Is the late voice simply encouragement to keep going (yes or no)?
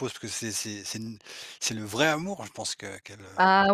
no